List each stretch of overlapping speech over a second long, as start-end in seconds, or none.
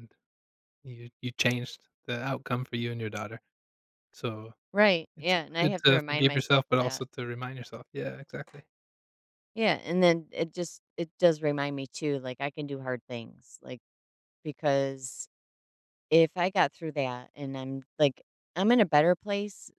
5.2-7.0